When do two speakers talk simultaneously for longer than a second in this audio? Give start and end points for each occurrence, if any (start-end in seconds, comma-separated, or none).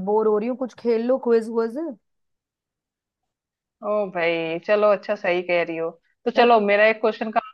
none